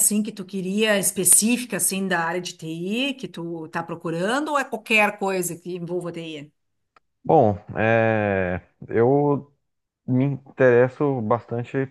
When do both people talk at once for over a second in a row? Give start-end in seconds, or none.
none